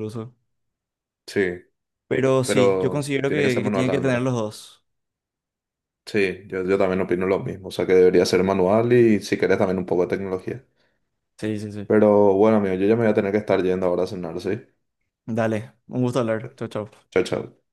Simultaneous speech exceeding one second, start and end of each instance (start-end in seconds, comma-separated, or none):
2.4-4.3